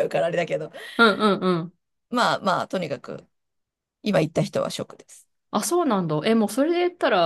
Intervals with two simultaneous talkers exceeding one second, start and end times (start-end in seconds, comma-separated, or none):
none